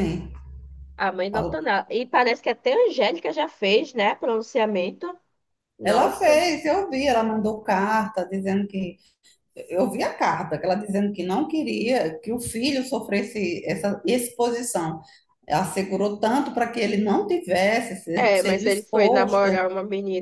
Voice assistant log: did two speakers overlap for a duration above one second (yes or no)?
yes